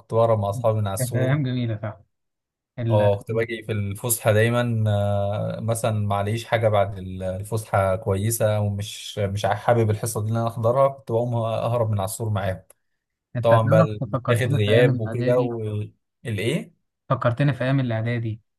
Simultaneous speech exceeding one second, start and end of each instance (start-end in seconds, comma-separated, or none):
13.4-15.4